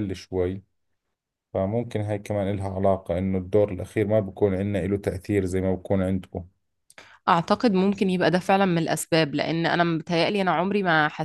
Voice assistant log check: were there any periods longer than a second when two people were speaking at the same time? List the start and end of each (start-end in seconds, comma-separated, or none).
none